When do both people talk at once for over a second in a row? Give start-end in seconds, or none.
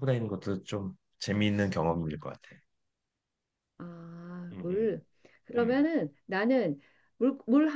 none